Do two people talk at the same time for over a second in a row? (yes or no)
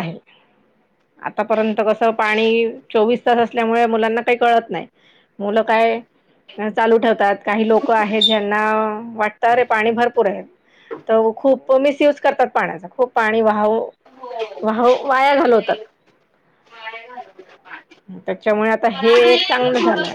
no